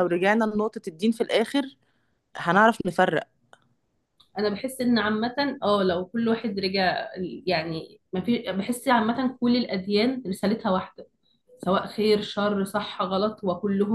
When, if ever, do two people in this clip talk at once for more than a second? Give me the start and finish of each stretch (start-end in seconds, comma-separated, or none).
none